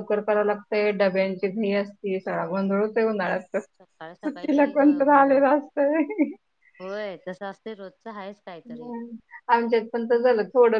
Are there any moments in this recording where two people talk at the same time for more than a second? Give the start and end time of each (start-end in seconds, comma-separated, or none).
4.2-5.5